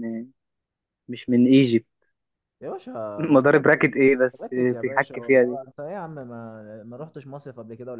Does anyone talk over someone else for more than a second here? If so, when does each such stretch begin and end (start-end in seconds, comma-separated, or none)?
3.2-5.6